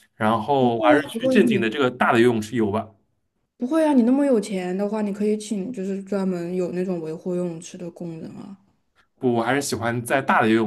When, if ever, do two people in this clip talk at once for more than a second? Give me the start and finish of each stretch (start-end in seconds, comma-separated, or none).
0.6-1.8